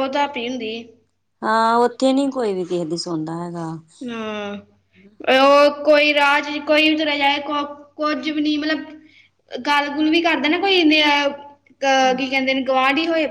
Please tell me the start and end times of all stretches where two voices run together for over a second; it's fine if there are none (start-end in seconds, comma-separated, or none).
none